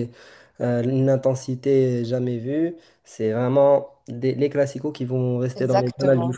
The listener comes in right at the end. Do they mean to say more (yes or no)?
yes